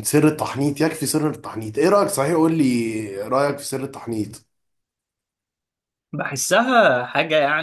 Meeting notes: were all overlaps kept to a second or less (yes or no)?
yes